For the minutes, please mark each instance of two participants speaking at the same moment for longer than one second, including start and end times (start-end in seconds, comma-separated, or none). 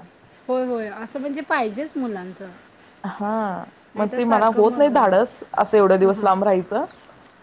4.0-5.4